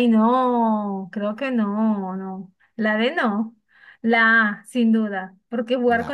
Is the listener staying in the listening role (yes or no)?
yes